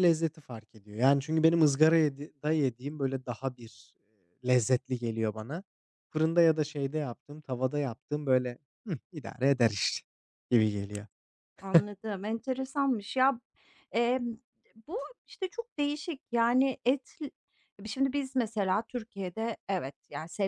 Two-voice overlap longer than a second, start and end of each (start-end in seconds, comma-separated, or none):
none